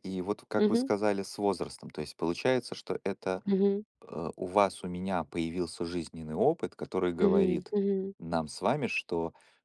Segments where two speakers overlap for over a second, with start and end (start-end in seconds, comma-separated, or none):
none